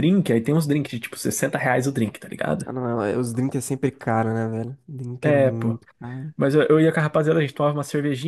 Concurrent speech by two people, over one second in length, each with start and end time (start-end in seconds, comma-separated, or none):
none